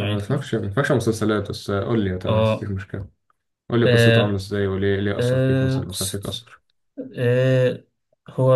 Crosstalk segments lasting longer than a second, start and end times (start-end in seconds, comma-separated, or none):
5.2-6.4